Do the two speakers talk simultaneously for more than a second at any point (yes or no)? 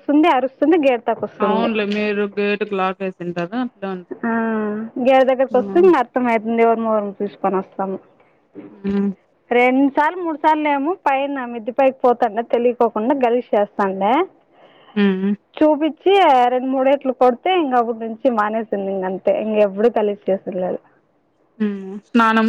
no